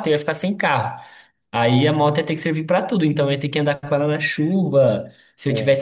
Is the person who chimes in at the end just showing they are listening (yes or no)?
yes